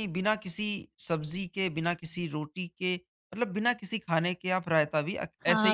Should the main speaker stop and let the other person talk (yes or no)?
yes